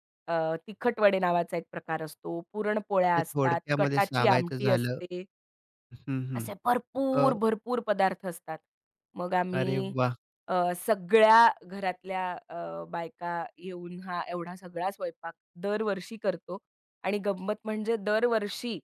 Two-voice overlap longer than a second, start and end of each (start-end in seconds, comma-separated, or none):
3.1-5.0